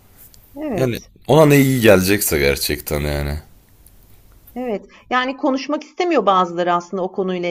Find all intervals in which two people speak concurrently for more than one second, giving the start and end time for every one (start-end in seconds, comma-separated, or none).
none